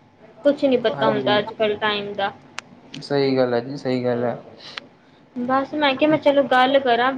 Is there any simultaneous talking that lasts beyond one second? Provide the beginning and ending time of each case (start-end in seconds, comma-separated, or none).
none